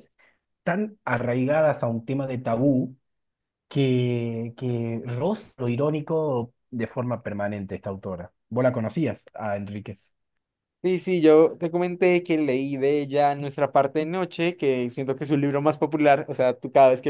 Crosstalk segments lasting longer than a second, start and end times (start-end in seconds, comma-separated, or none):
none